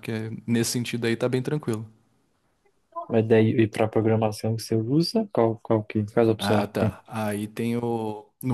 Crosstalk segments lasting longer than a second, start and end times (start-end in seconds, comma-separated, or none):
none